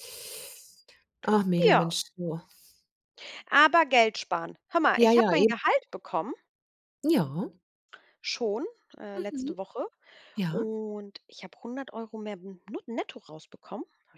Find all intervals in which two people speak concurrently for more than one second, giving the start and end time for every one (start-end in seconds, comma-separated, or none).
none